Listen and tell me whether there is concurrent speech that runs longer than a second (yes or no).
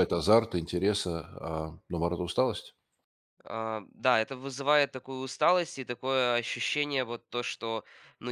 no